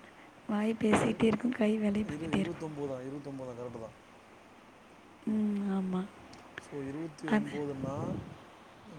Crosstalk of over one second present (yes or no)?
yes